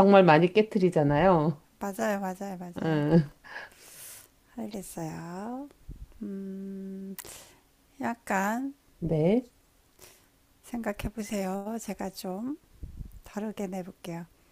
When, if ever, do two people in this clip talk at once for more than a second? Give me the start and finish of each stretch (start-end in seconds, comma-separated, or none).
none